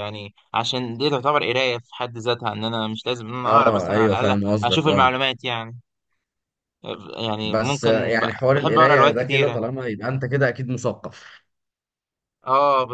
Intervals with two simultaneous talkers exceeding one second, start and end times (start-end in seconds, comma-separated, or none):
3.5-5.1, 7.4-9.6